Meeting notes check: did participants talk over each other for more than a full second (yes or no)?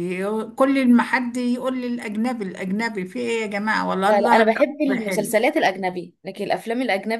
yes